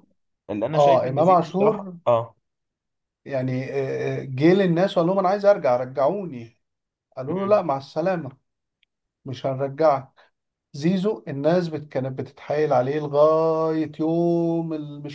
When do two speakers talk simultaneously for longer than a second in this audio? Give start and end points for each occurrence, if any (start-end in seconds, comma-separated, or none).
0.8-1.9